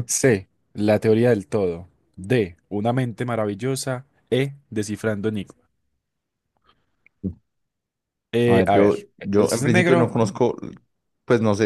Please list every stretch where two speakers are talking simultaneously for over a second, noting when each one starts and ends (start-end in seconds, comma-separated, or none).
8.4-10.4